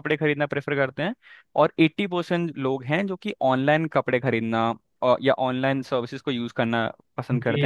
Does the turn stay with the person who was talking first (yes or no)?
no